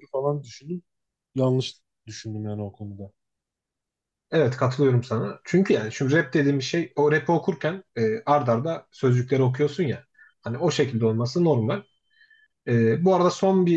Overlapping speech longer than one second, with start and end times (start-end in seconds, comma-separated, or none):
none